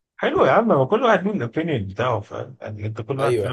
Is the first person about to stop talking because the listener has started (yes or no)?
no